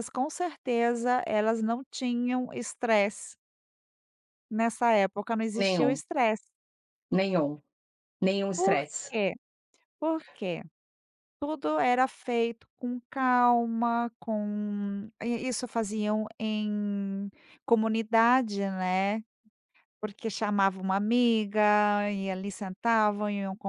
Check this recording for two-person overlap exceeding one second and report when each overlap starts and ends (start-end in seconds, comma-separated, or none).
none